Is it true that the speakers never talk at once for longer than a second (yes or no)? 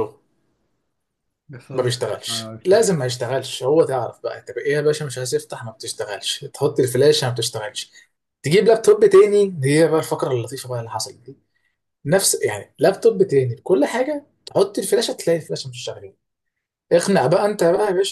no